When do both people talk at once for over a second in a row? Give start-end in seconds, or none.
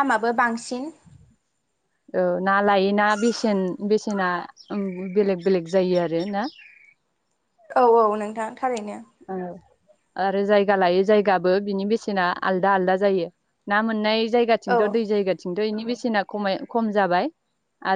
none